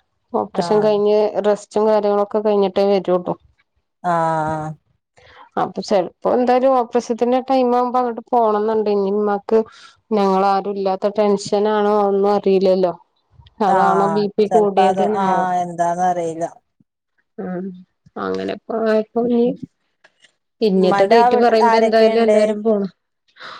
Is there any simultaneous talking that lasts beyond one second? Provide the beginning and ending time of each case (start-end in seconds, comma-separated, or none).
20.8-22.4